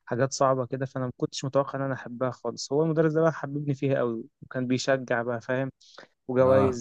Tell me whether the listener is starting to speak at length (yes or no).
no